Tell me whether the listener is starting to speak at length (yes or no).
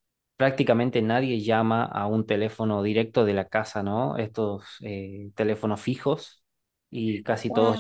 no